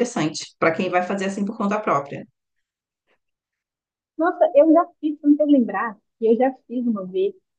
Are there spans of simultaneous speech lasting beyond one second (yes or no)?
no